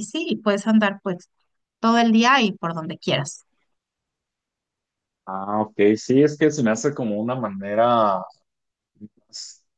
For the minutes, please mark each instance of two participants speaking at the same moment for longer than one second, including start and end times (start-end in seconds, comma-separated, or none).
none